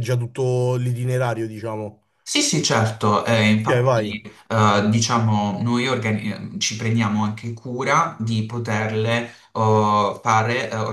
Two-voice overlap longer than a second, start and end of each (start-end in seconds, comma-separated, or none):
none